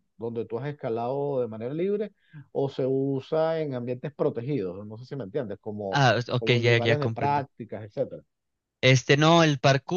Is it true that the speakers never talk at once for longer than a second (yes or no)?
no